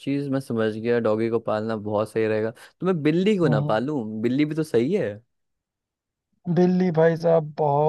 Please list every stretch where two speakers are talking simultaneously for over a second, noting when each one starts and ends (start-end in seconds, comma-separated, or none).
none